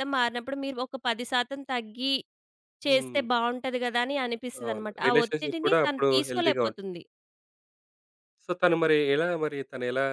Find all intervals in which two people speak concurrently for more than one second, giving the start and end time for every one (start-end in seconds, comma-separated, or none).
4.7-6.6